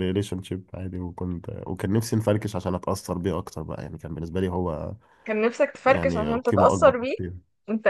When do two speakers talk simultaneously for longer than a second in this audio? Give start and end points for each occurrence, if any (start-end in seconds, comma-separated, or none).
5.9-7.2